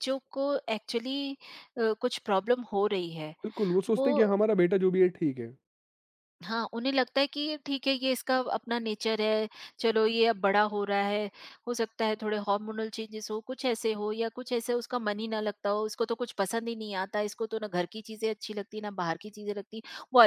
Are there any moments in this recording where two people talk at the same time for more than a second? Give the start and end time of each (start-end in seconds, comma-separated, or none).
none